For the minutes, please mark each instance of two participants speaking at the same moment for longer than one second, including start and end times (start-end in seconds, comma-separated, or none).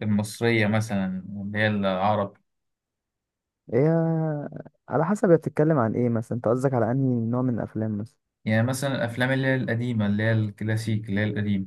none